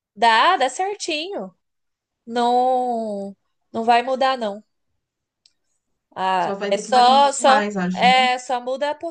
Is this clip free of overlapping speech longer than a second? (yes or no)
no